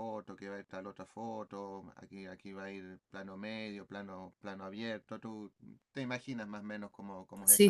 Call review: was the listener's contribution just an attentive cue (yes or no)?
no